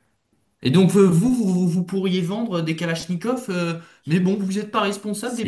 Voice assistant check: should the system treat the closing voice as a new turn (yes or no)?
yes